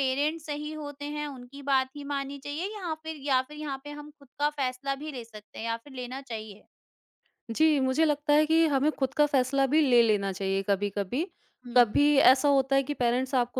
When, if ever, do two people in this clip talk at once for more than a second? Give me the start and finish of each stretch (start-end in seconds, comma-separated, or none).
none